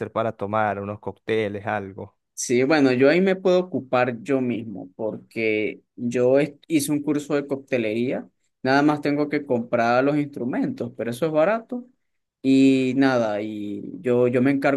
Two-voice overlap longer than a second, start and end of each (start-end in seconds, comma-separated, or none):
none